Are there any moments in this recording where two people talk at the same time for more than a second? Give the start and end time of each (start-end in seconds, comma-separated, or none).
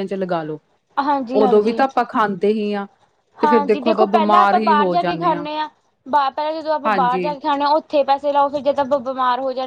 3.4-5.4